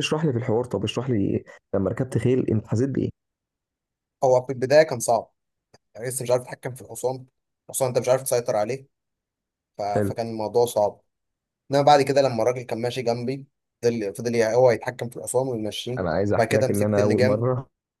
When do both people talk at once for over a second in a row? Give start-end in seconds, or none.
16.0-17.4